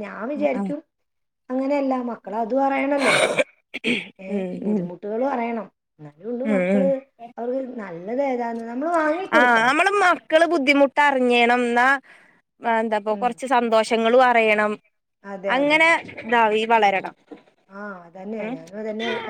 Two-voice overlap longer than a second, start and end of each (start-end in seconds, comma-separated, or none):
none